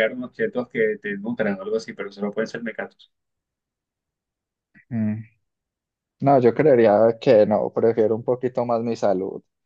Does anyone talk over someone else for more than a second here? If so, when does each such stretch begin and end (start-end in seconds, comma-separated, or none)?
none